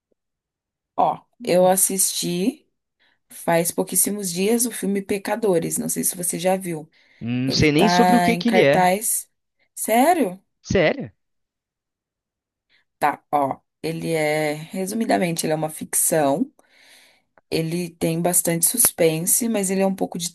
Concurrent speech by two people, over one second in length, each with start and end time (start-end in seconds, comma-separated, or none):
7.5-8.9